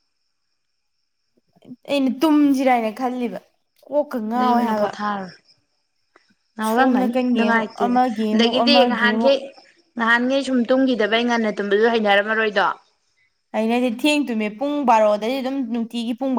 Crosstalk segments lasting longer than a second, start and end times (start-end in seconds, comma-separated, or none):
6.7-9.3